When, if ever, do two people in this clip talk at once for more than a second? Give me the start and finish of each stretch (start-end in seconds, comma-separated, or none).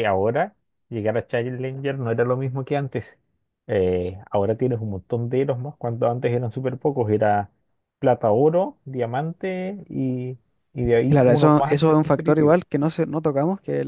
11.1-12.6